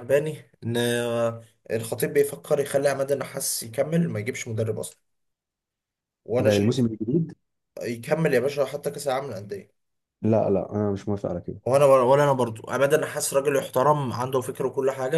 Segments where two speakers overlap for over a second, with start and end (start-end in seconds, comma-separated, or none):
none